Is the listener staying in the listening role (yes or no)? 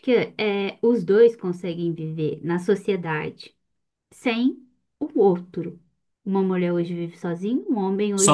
no